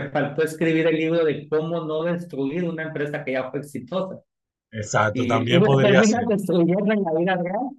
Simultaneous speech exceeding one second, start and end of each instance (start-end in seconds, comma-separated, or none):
5.1-6.3